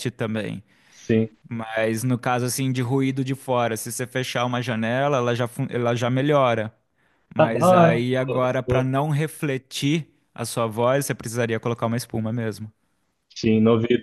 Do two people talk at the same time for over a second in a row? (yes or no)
yes